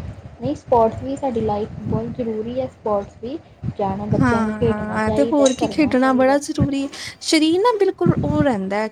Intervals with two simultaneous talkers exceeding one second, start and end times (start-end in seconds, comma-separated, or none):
4.2-6.4